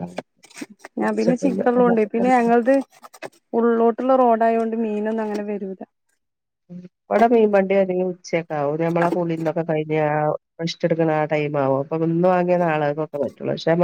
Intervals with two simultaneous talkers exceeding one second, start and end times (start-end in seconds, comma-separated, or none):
1.0-2.3